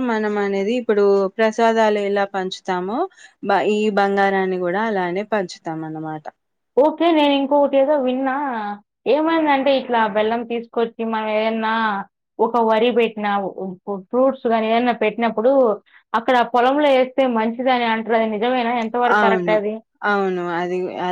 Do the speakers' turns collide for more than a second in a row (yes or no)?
no